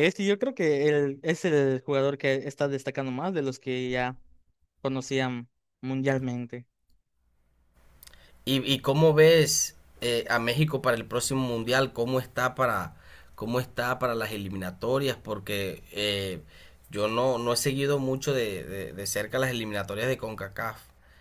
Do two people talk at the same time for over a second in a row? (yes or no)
no